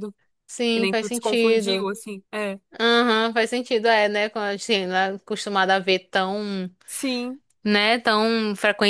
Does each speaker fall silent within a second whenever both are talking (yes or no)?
no